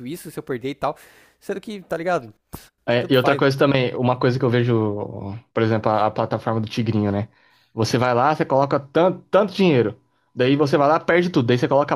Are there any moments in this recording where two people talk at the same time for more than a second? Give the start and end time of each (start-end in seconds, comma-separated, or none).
none